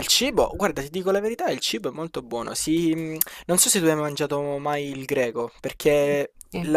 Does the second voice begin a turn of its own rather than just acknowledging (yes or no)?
no